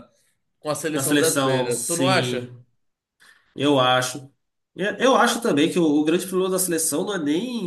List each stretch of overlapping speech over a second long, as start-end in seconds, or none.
0.9-2.5